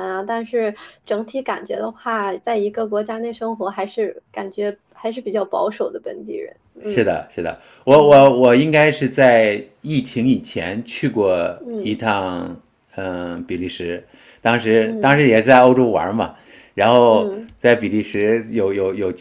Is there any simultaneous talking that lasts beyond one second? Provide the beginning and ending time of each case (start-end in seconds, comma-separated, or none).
none